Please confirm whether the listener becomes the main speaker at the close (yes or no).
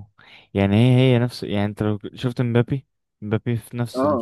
yes